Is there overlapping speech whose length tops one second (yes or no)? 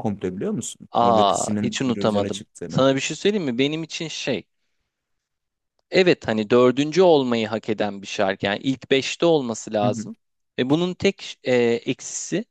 yes